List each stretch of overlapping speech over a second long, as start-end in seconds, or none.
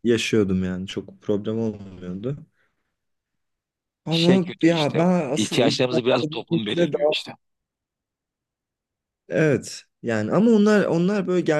4.1-7.1